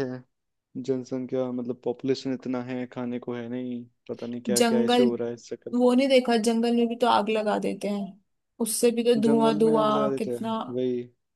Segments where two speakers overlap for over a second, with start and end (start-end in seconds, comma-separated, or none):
9.2-10.5